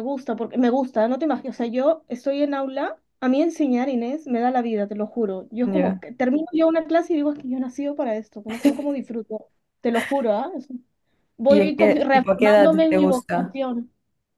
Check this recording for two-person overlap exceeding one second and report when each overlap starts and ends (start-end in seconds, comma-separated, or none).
11.5-13.6